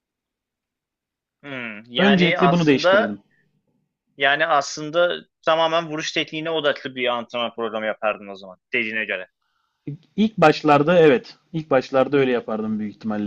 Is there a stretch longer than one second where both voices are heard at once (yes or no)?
yes